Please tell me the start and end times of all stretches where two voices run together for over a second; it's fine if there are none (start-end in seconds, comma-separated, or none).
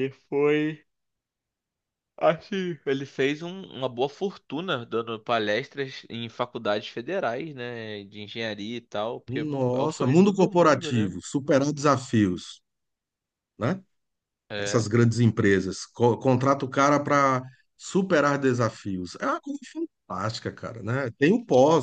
9.3-11.2